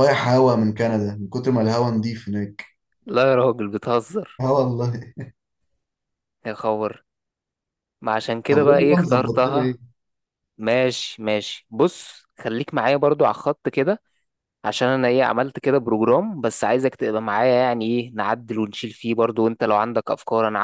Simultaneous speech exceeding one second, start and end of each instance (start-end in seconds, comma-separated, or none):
8.5-9.8